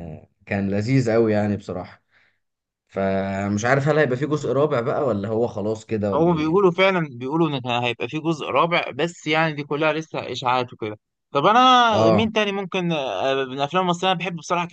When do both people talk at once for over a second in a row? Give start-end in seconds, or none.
none